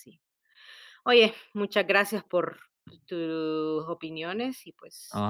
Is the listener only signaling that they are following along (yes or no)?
no